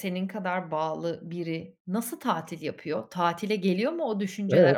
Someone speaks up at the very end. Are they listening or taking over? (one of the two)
taking over